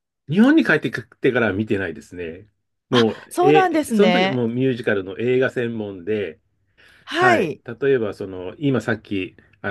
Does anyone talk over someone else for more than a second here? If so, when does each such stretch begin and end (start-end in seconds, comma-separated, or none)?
2.9-4.4